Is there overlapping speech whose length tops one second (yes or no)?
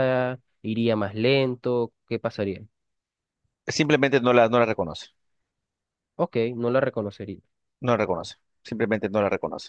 no